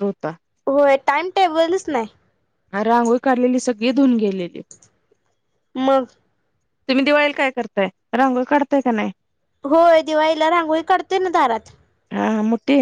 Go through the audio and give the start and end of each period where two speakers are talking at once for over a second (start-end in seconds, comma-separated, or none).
none